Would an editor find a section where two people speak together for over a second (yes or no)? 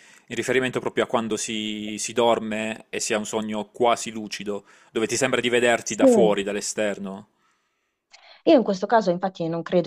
no